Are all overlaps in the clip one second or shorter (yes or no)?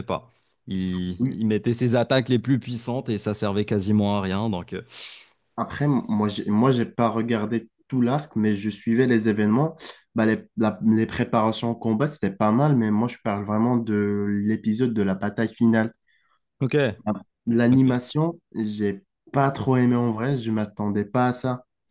yes